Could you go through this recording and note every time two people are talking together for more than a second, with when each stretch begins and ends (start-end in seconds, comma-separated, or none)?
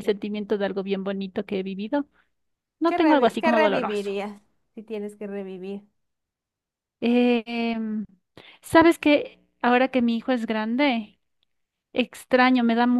2.8-4.2